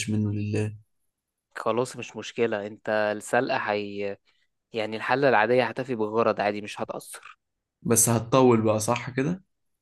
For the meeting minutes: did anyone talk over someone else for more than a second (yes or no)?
no